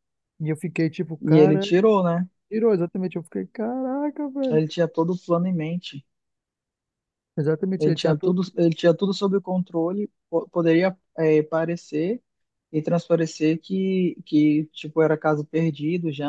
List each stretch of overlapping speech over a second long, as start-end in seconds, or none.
none